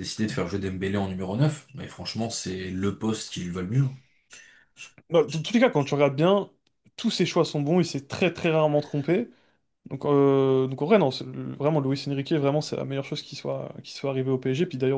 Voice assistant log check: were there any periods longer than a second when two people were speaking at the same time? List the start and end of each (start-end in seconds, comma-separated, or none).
none